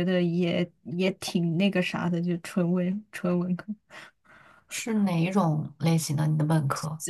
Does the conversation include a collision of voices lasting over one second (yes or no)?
no